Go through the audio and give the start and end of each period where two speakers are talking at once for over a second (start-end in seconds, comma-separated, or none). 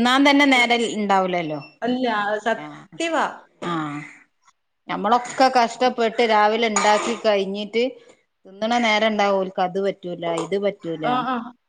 none